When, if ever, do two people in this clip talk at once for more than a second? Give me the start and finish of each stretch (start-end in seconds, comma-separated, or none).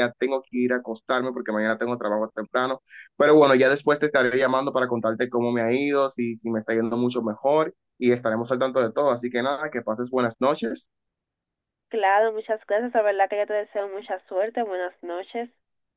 none